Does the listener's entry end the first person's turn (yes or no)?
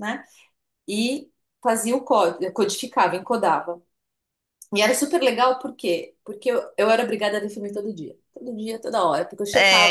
yes